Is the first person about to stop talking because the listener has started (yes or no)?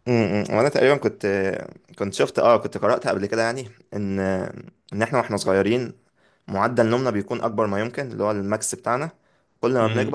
no